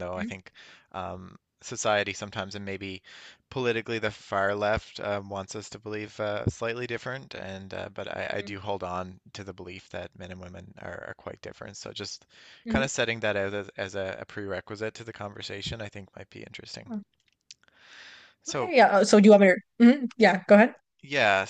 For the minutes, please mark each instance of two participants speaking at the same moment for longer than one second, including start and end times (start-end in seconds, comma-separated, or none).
none